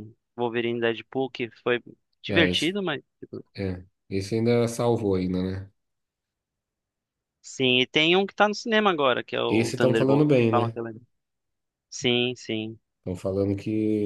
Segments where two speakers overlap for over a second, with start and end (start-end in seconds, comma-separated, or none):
9.5-10.8